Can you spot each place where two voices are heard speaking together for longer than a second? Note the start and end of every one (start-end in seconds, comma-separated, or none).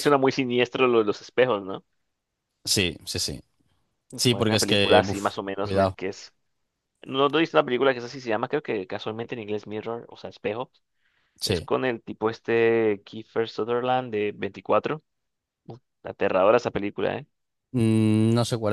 4.3-6.0